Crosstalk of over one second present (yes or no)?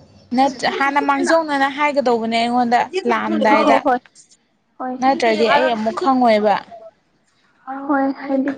yes